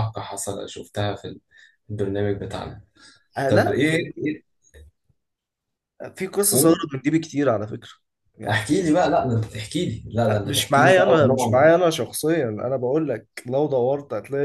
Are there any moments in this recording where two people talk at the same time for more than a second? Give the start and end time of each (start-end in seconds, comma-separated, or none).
10.3-11.7